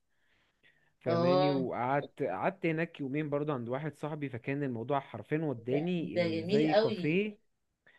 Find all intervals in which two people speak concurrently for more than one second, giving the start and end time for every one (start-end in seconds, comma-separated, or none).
5.7-7.2